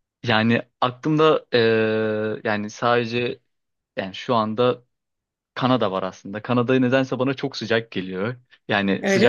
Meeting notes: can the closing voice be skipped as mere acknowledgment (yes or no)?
yes